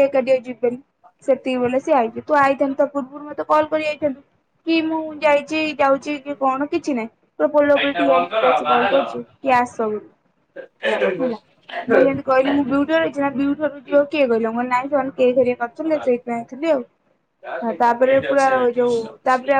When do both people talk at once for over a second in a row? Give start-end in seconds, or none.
15.5-16.8